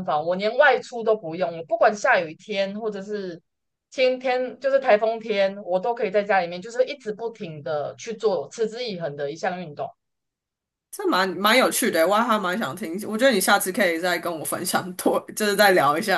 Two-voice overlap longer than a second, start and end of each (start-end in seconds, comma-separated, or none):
none